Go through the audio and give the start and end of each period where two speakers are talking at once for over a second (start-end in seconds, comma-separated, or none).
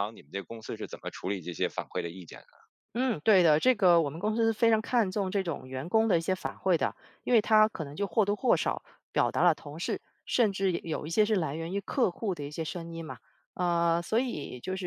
none